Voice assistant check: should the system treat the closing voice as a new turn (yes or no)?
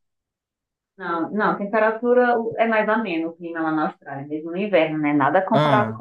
no